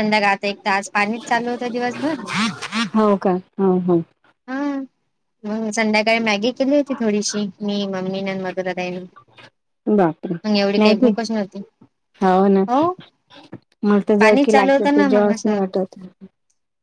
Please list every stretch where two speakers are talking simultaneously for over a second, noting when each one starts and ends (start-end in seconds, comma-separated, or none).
14.2-15.6